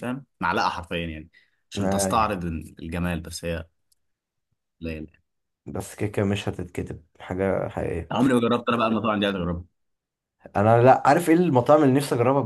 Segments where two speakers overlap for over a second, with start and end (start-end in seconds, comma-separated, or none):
none